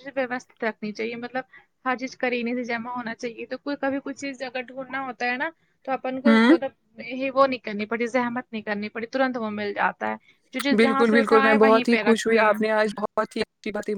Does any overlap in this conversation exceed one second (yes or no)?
yes